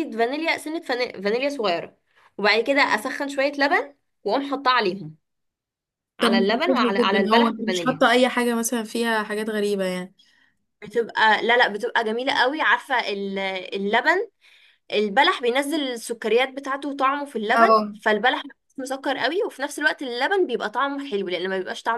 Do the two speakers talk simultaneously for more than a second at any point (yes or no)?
yes